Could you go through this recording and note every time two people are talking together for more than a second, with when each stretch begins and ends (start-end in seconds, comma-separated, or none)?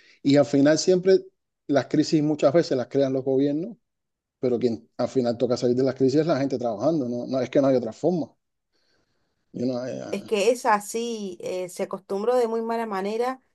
none